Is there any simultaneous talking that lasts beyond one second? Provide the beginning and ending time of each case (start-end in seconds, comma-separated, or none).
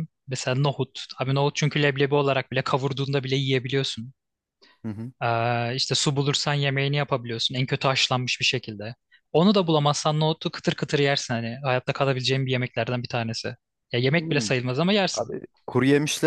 none